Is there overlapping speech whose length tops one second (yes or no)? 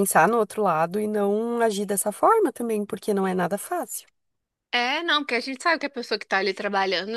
no